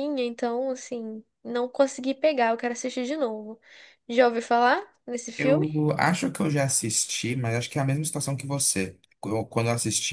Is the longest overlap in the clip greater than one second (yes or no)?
no